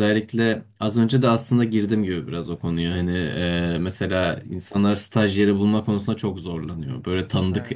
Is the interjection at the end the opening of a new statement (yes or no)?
no